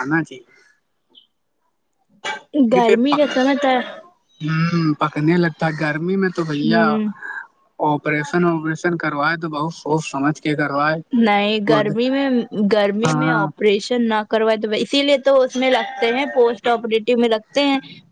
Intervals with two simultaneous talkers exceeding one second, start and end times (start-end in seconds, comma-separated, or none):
none